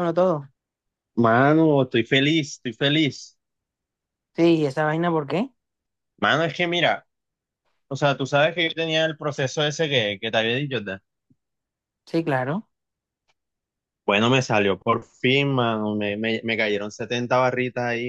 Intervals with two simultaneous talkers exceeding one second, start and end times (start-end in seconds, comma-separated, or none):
none